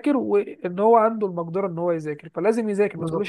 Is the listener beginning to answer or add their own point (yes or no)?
yes